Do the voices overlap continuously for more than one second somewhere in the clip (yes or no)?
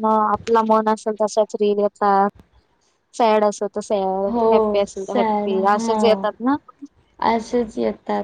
yes